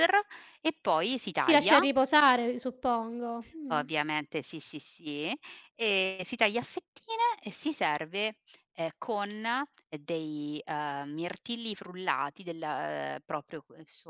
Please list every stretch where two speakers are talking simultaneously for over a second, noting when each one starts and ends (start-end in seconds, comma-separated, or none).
none